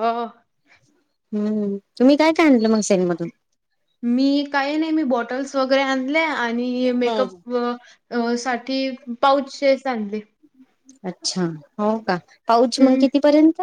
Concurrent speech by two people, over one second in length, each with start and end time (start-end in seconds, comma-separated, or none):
none